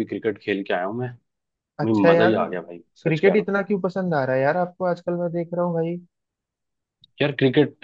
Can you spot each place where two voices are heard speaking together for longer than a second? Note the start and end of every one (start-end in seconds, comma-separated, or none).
none